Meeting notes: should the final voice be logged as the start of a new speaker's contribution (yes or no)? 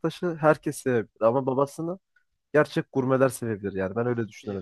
yes